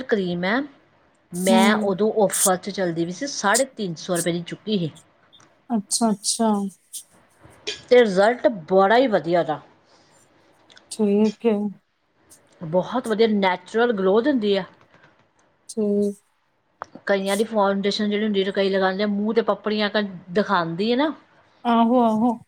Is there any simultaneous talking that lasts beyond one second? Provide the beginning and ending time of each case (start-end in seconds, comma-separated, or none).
none